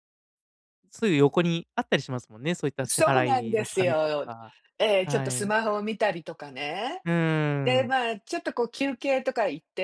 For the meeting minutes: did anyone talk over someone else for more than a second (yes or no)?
yes